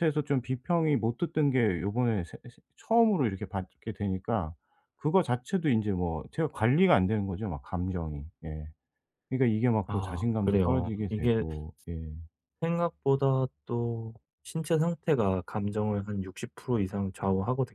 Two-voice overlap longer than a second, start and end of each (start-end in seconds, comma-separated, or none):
9.8-11.4